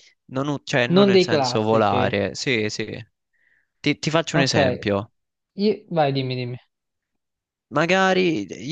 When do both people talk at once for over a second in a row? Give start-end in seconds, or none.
0.9-2.2